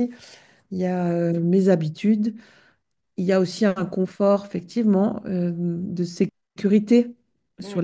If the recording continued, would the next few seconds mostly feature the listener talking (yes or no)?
no